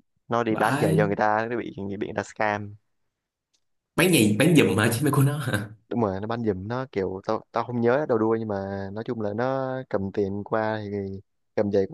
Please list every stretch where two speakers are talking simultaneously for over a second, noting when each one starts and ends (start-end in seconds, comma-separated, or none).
none